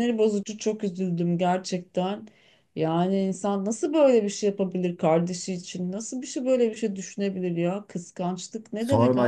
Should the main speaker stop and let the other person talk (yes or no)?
yes